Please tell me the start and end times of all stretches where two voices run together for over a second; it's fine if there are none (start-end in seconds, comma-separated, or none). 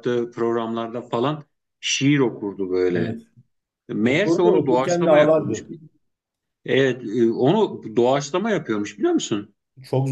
4.0-5.6